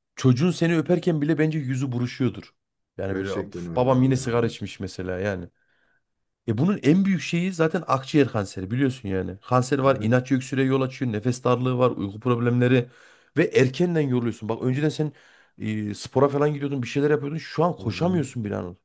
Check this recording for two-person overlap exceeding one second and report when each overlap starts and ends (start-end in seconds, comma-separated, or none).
3.1-4.5